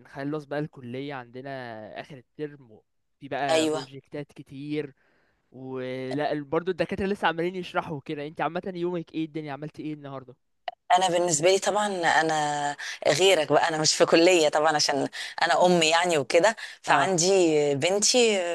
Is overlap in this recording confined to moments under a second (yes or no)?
yes